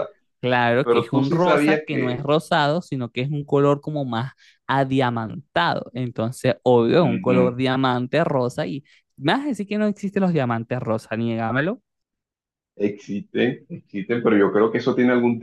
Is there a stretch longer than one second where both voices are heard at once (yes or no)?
yes